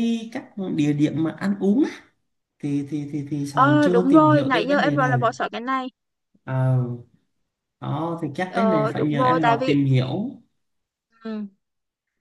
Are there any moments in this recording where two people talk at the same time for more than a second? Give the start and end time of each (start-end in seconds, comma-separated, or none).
3.5-5.1, 8.5-9.8